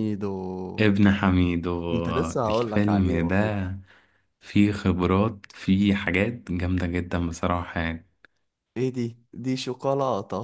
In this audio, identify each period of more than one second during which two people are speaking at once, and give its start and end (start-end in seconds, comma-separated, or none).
1.9-3.7